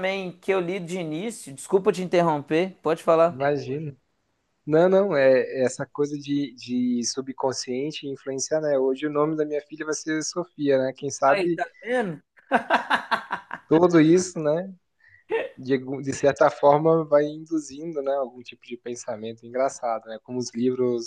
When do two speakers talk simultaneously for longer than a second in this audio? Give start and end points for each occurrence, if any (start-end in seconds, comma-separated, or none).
none